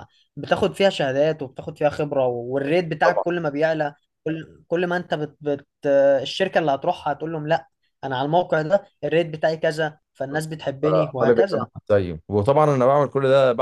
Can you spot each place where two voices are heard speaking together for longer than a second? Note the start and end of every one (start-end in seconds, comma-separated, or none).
none